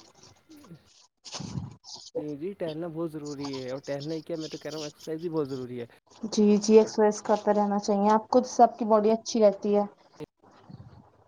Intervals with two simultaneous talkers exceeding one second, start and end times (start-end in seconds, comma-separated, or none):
none